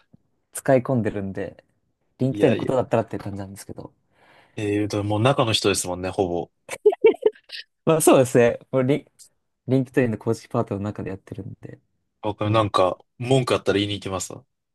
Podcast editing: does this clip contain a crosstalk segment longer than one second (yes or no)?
no